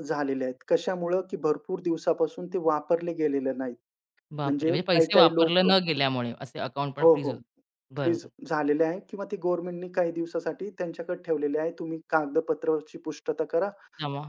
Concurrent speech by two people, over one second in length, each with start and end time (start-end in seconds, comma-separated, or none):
4.4-5.7